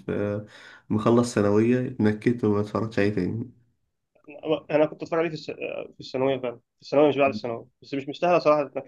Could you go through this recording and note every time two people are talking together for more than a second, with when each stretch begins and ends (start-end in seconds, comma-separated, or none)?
none